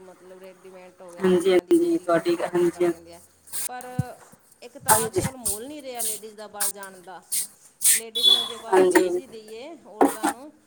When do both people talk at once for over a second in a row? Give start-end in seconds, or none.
1.2-2.9